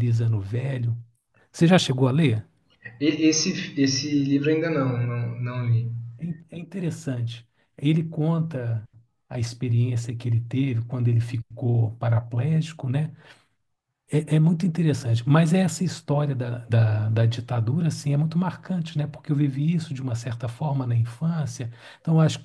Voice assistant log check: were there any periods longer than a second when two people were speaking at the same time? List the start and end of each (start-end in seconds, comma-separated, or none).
none